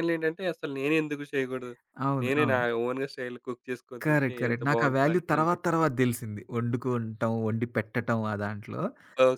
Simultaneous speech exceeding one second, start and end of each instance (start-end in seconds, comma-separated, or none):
4.0-5.8